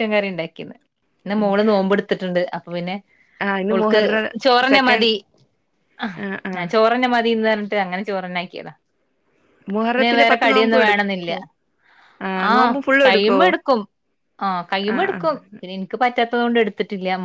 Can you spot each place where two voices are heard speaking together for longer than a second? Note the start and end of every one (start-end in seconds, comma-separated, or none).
9.9-11.3